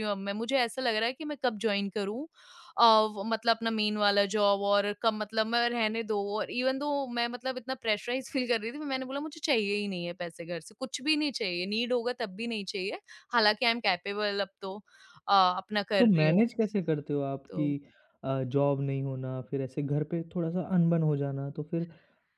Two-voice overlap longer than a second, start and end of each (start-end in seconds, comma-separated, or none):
none